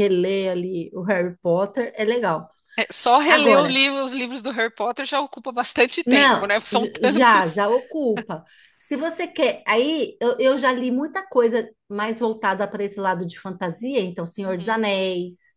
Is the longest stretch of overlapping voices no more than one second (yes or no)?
no